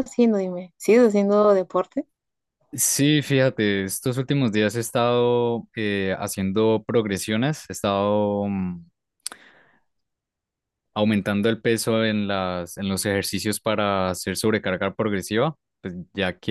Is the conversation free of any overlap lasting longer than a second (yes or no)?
yes